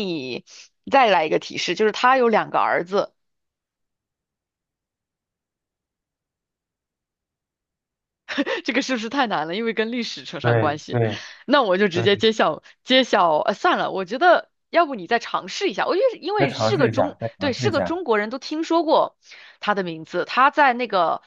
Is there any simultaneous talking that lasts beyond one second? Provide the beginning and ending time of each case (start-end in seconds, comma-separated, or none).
16.4-18.0